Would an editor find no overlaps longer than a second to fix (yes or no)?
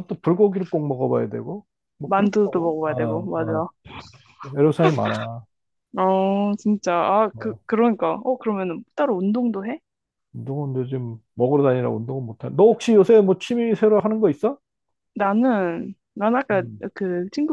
no